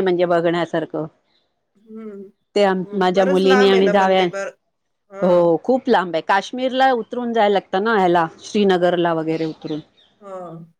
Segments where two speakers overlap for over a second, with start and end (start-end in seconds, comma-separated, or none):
2.6-4.2